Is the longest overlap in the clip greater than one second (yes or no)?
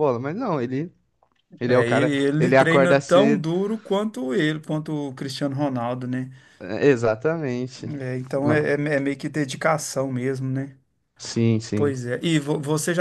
yes